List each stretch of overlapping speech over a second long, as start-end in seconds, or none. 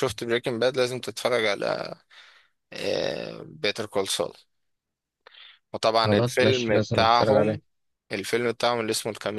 6.0-7.6